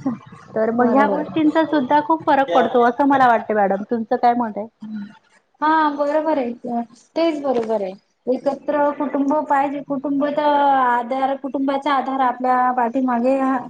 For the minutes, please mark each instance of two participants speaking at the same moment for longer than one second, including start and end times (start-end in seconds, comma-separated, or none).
none